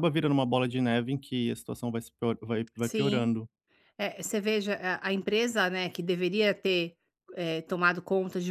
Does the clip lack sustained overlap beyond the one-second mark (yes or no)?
yes